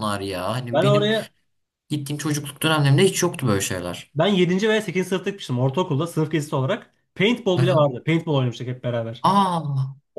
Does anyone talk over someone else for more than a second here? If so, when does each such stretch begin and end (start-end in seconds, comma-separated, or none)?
none